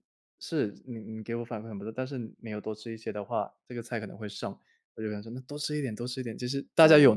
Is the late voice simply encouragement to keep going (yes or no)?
yes